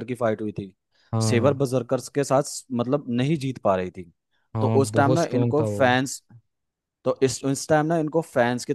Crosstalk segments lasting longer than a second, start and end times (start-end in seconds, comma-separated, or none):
4.6-6.0